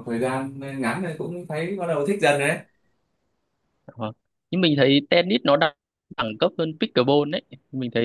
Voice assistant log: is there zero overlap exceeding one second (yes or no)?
yes